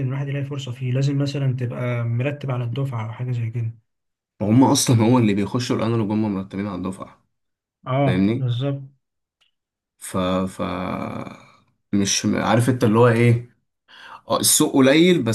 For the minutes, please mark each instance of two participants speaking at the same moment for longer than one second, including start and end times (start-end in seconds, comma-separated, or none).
none